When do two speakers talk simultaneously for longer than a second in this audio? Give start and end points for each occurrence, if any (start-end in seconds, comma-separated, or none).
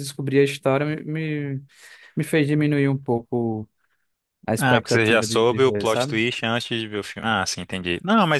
4.6-6.2